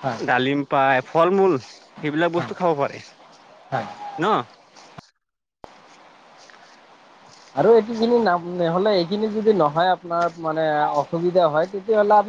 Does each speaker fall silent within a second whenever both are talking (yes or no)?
yes